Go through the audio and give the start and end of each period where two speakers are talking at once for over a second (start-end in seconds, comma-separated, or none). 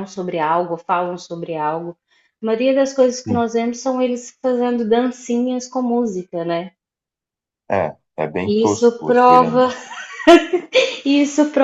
8.4-9.7